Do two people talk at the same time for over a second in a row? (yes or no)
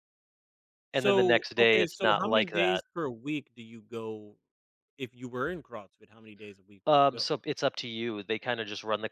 yes